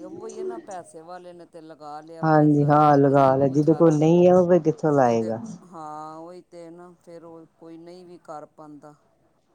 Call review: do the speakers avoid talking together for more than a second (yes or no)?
no